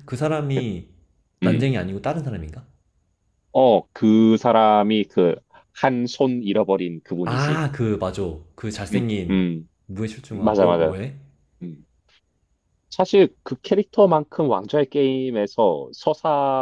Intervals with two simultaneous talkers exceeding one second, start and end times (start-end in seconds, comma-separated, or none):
none